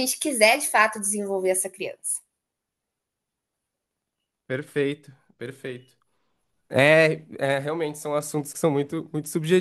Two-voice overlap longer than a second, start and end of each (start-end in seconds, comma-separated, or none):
none